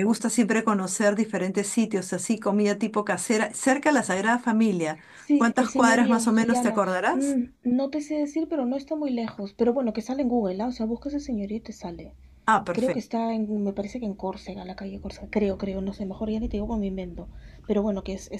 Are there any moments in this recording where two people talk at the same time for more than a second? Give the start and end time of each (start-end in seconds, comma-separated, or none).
5.3-7.4